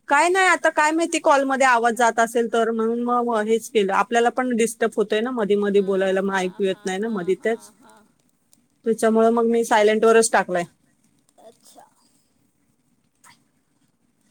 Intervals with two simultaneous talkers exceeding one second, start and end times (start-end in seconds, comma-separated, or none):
5.7-7.7